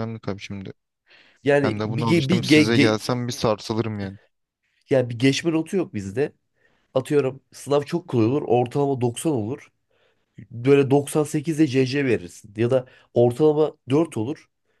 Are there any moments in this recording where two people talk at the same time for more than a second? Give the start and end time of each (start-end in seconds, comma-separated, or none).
1.6-3.0